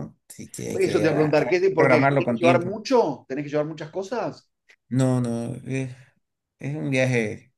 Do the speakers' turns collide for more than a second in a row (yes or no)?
yes